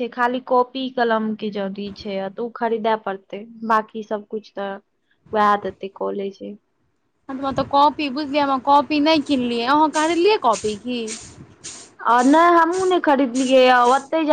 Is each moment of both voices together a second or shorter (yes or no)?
yes